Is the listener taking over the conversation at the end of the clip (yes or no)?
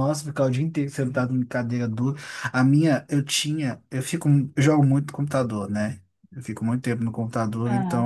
no